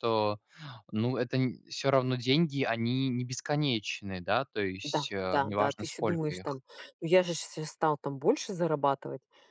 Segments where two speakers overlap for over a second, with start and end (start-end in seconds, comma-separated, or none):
4.8-6.6